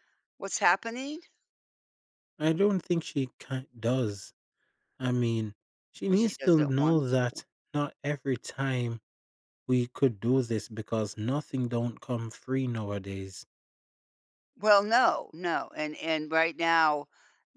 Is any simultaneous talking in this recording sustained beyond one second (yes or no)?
yes